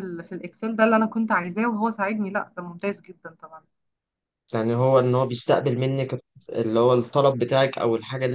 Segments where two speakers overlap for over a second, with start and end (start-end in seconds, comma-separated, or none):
none